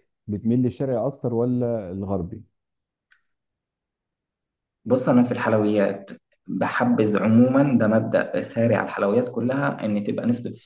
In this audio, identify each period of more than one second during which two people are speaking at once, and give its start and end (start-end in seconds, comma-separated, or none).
none